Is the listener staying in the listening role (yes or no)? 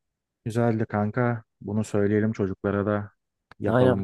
no